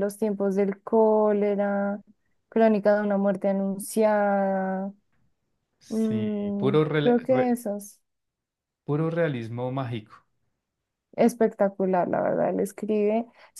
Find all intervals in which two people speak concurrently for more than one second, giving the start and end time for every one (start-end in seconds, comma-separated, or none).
5.9-7.6